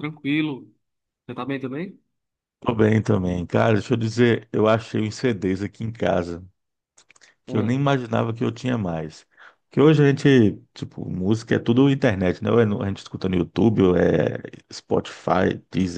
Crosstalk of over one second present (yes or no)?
no